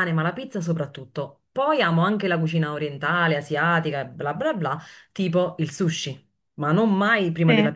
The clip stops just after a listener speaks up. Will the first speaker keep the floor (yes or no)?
yes